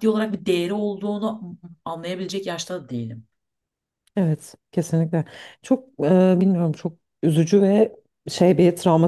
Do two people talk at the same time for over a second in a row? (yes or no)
no